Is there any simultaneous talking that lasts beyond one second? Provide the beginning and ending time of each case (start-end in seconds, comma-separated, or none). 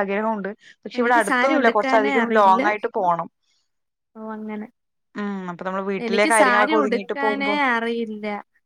1.0-2.6, 6.0-7.6